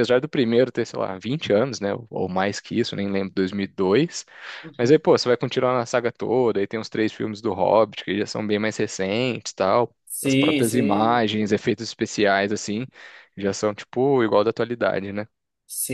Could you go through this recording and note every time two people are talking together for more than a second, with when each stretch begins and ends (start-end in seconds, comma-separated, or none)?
10.1-11.2